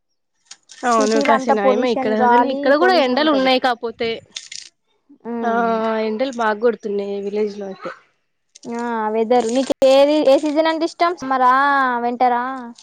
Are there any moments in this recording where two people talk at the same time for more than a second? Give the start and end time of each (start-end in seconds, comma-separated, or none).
1.4-3.5